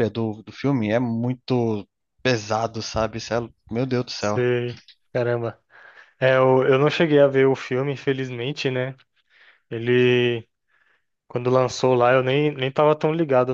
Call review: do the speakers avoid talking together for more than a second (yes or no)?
yes